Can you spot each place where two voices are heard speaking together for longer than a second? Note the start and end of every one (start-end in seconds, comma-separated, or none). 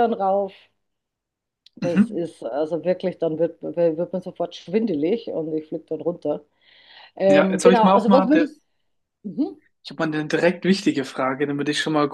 7.3-8.5